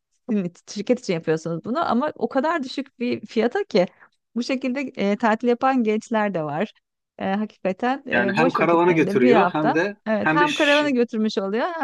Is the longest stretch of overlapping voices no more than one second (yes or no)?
no